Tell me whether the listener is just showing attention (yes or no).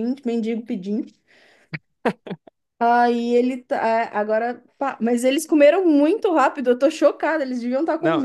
no